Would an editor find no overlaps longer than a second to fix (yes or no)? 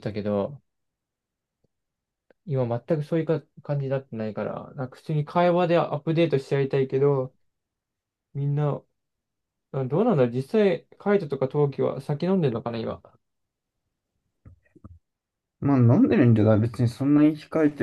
yes